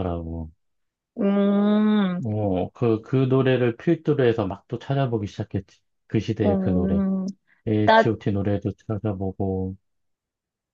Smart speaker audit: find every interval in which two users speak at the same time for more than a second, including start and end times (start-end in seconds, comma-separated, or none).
none